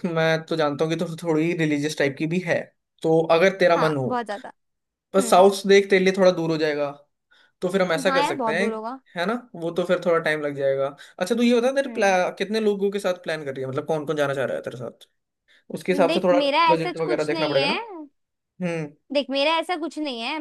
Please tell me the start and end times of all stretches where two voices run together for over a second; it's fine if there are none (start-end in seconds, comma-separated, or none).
16.1-17.8